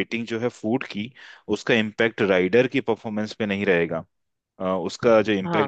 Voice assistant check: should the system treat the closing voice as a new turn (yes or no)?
no